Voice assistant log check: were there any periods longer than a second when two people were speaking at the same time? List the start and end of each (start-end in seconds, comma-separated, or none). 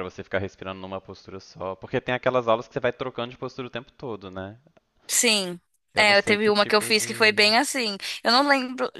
6.0-7.5